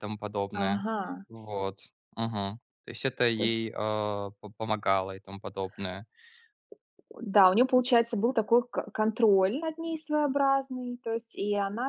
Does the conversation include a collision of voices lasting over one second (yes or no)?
no